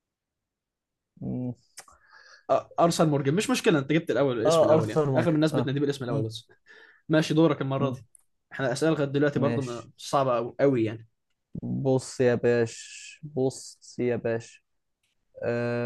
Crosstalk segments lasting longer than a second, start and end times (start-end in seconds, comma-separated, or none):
4.5-6.2